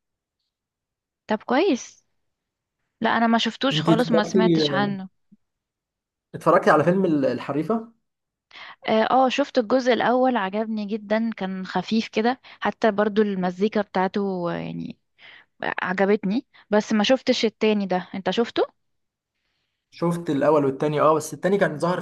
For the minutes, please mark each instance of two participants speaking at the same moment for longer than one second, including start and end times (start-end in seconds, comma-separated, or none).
3.7-5.0